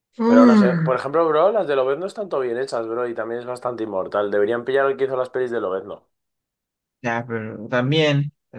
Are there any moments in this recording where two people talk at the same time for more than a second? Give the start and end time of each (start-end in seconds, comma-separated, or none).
none